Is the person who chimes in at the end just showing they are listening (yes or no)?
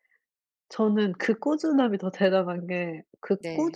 yes